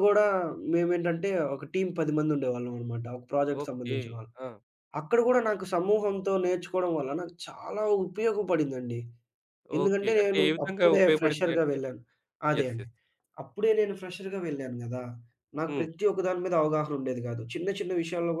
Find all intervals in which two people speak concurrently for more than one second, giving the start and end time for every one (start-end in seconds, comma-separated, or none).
9.8-11.8